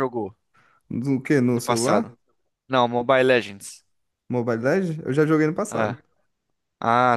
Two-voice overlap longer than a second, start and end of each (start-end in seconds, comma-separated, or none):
none